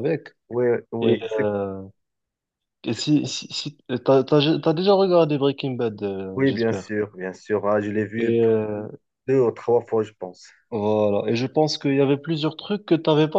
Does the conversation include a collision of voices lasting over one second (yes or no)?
no